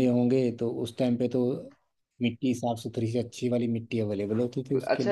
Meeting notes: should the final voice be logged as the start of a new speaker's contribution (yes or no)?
yes